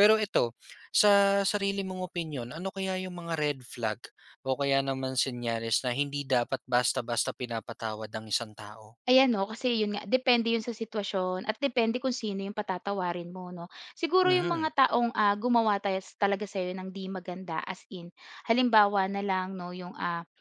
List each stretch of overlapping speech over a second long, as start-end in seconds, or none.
none